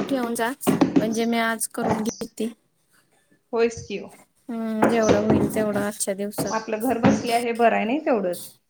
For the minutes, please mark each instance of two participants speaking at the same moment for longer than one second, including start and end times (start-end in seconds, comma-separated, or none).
none